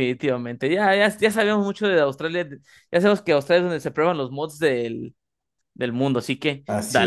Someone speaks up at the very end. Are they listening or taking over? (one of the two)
taking over